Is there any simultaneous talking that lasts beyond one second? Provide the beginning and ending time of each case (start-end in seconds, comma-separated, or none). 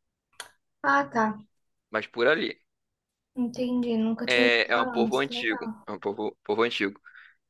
4.3-5.9